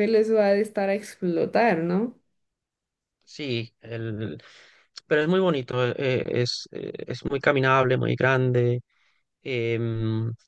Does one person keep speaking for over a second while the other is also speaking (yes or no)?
no